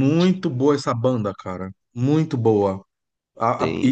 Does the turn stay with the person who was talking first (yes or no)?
yes